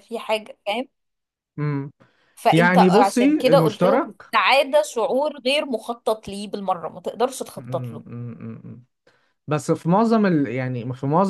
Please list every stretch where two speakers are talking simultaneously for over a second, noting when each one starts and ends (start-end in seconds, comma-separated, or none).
2.5-4.3